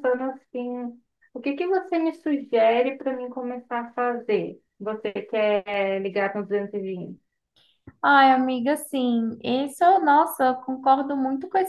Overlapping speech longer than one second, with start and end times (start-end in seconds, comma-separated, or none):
none